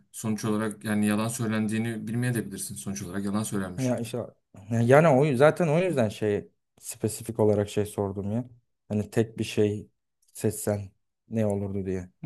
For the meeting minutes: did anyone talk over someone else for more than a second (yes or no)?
no